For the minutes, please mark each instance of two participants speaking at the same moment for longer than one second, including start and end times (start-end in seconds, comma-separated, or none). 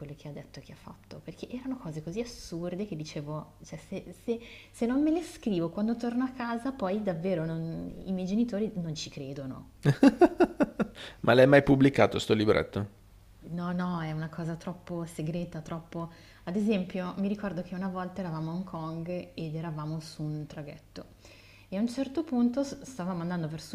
none